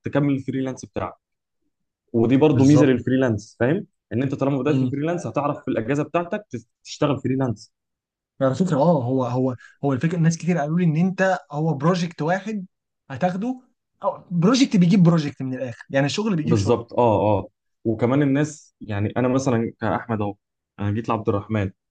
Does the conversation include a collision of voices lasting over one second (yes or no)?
no